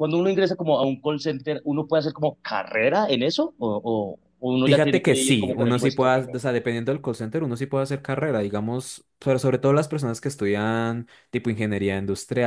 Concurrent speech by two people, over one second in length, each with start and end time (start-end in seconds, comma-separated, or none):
4.6-6.4